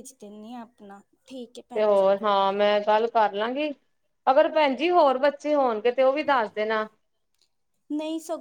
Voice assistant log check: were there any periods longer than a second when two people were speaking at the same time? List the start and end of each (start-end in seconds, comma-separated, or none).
none